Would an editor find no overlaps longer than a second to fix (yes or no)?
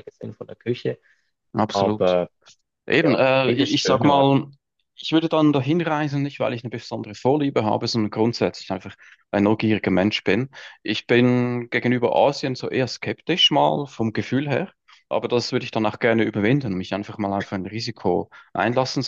no